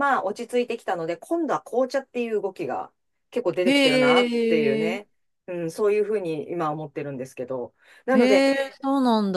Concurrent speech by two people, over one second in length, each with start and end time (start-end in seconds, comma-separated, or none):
3.6-5.0